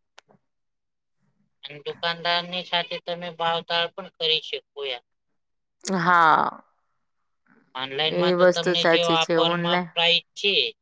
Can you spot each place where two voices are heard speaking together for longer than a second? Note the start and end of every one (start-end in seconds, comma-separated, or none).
8.1-9.9